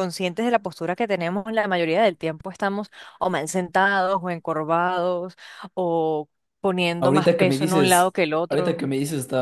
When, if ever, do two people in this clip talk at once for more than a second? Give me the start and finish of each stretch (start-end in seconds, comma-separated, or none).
7.0-8.8